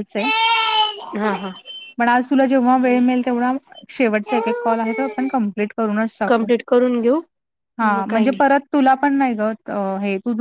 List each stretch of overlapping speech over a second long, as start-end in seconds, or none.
none